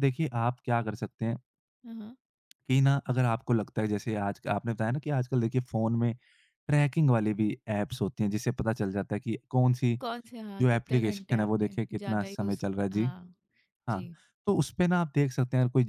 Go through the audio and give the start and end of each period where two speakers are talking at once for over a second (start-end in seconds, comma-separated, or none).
10.6-13.1